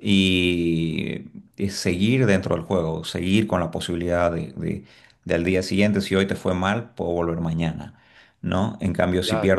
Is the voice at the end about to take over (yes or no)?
no